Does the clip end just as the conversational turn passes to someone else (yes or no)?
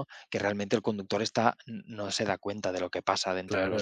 yes